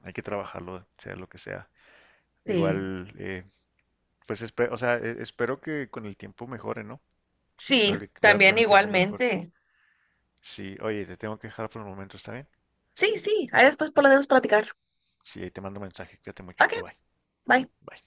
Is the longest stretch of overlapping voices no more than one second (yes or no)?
no